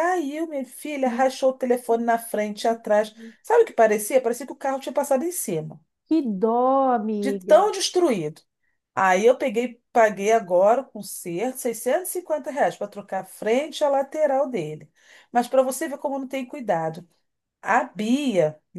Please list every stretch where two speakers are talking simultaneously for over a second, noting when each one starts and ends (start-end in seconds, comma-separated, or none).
none